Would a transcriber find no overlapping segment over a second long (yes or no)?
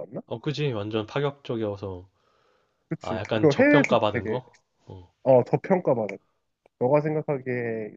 no